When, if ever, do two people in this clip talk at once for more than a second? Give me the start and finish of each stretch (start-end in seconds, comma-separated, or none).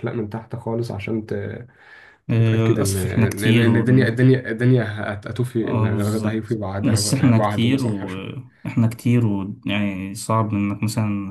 2.3-4.2, 5.6-8.1